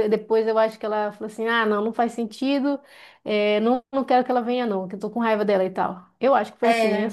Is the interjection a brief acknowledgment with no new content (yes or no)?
yes